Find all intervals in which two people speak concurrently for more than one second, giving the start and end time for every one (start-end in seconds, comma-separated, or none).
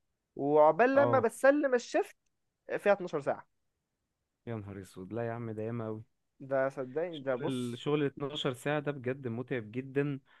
none